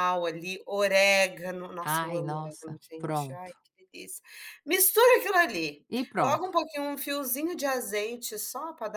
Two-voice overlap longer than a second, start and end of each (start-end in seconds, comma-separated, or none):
1.8-3.6